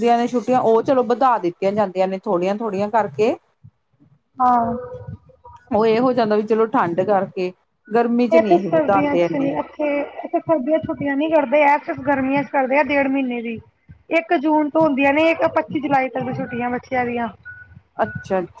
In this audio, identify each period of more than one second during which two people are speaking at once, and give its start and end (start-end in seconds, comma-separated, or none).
none